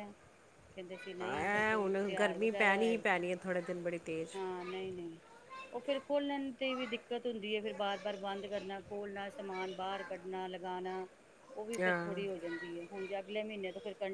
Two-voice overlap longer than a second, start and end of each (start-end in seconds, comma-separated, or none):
1.2-3.0